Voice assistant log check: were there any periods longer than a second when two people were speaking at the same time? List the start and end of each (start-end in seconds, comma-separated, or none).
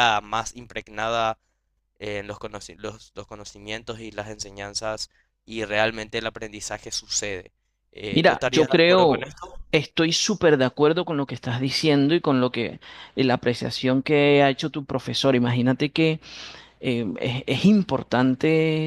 8.1-9.3